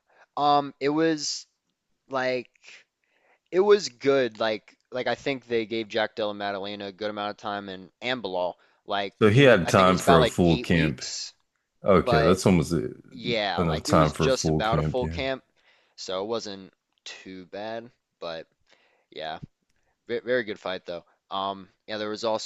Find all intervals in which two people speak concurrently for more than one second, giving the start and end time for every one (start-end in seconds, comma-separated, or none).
9.2-11.0, 13.6-15.2